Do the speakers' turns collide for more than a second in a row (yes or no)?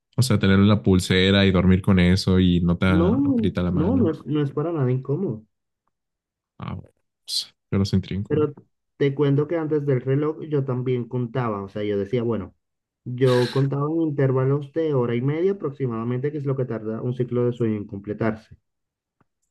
yes